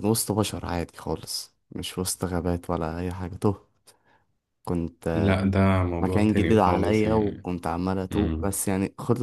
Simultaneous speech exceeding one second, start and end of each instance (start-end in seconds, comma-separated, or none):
6.0-7.5